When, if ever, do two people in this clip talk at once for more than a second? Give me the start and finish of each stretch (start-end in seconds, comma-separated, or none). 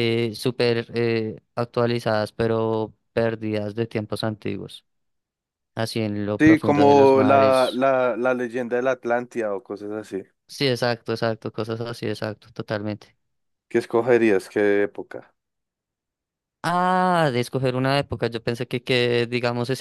6.4-7.8